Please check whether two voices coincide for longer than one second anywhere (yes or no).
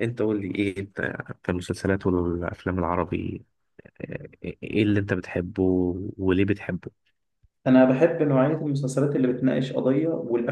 no